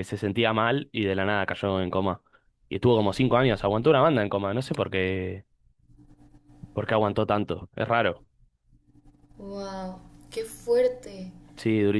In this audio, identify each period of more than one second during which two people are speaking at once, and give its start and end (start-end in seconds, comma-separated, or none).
none